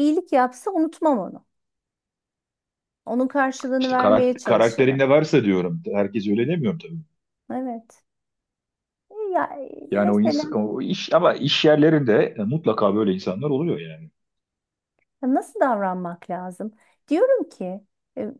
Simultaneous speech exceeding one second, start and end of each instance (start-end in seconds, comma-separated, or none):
3.8-5.0